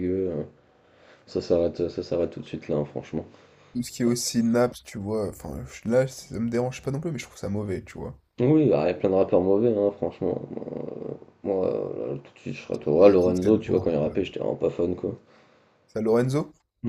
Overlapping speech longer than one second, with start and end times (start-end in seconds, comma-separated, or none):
13.0-14.3